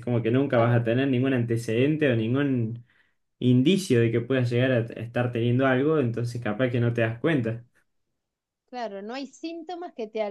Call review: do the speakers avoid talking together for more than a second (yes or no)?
yes